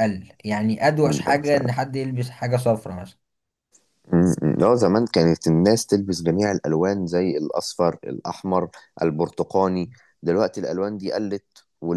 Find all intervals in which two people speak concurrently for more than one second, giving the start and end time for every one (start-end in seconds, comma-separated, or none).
none